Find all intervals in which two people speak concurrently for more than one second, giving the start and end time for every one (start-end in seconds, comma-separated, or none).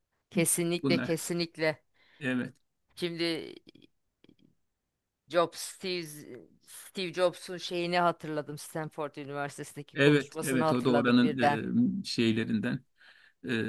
9.9-11.4